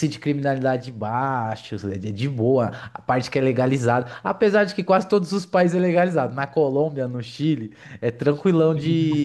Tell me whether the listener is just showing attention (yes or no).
yes